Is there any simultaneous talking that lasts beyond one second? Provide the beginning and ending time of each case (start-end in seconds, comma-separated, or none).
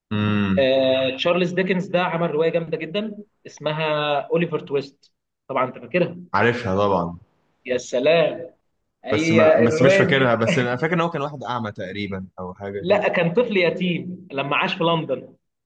9.1-10.4